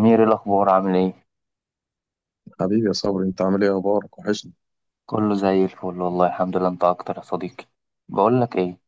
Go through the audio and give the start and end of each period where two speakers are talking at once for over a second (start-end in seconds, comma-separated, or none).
none